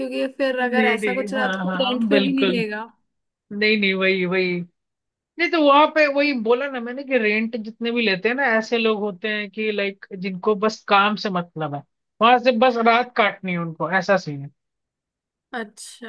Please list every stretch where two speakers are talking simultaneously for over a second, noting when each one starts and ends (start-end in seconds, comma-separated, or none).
0.6-2.5